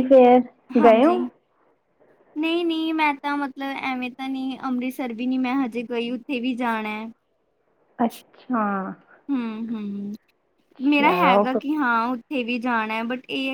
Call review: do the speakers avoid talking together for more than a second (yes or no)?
yes